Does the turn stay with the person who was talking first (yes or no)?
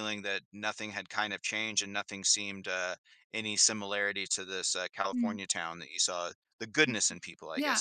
no